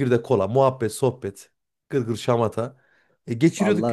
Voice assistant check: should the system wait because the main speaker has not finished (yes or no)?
yes